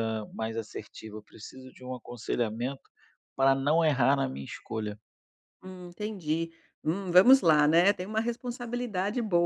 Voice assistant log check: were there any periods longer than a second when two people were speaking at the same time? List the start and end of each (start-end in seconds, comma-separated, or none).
none